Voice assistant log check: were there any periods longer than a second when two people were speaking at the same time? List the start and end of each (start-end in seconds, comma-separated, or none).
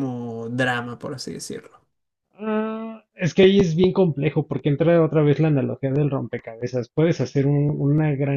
none